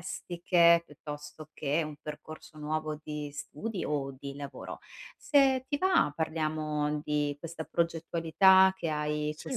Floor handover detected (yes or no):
no